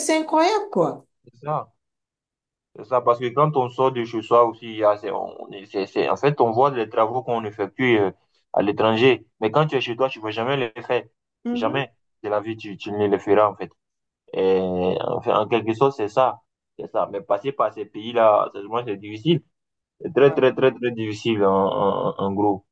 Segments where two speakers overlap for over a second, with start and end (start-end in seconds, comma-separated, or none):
none